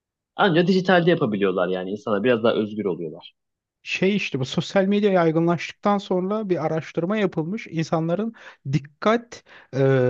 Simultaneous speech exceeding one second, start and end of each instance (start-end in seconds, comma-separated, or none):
none